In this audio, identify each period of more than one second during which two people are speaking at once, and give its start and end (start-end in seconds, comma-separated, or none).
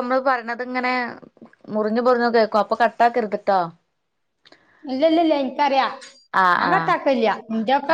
none